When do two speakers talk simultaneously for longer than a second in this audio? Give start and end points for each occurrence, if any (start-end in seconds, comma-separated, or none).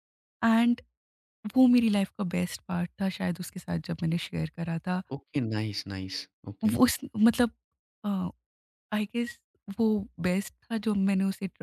none